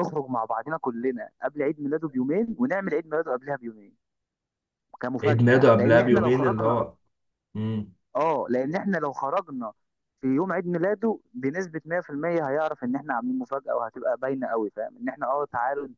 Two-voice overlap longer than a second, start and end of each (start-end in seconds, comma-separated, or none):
5.2-6.9